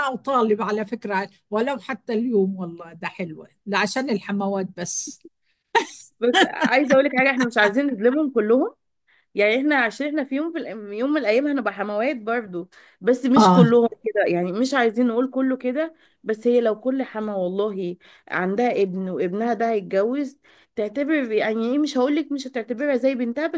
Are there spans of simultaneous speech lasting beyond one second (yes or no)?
no